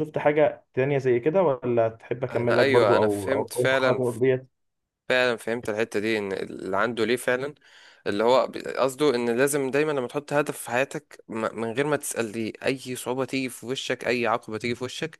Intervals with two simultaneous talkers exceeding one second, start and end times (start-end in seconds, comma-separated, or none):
2.3-4.0